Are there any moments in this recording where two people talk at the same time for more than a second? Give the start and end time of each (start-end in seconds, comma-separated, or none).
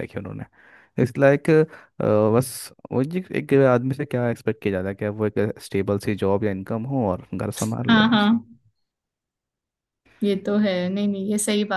none